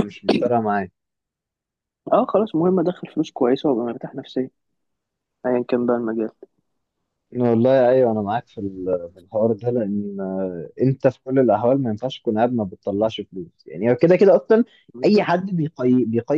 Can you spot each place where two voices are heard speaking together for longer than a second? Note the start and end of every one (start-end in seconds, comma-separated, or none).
none